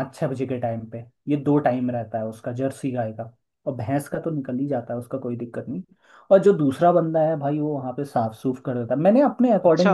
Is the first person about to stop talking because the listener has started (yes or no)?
yes